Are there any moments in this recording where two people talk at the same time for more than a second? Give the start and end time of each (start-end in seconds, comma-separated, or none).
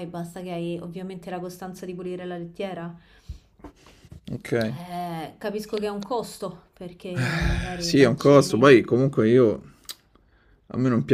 7.2-8.7